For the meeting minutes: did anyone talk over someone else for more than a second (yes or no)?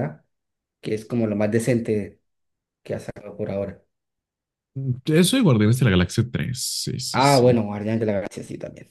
no